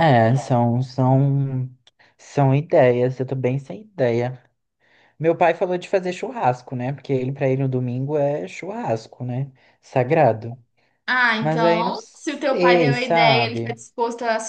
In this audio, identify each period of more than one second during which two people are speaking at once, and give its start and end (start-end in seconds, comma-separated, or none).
11.4-13.8